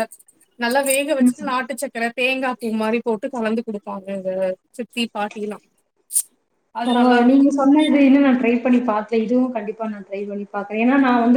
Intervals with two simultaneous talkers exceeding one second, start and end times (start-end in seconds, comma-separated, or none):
none